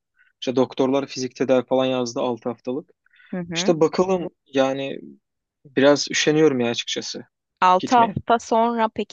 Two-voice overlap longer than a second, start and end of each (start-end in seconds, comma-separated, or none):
none